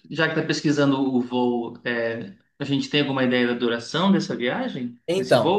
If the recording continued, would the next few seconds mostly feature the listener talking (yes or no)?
yes